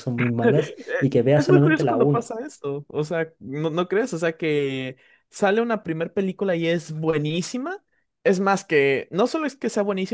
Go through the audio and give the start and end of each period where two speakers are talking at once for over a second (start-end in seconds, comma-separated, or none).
0.6-2.4